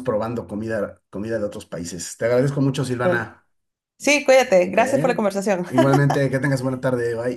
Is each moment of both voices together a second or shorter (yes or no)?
yes